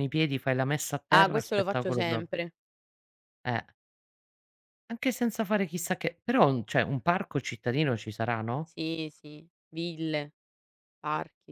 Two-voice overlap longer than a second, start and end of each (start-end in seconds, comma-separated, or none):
1.1-2.3